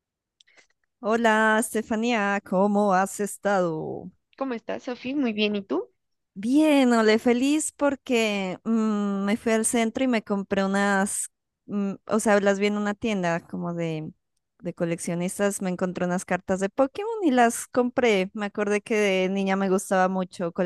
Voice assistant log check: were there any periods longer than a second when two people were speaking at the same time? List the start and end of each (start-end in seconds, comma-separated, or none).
none